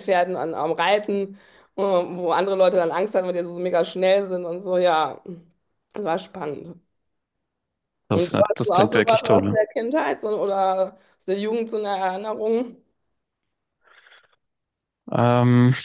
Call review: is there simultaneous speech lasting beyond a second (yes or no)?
yes